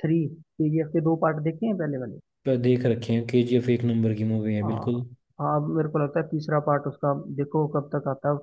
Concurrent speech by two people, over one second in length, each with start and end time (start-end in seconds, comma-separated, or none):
none